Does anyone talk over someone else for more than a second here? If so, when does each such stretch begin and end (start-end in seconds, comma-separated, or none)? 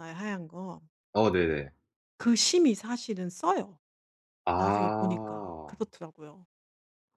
4.5-5.8